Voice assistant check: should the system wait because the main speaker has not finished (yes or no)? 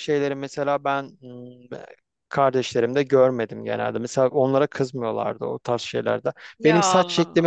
yes